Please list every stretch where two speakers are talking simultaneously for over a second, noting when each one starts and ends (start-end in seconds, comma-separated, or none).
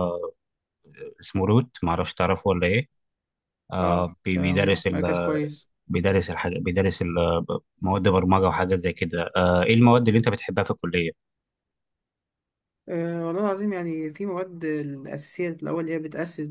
3.8-5.4